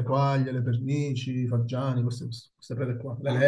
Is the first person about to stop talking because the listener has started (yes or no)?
yes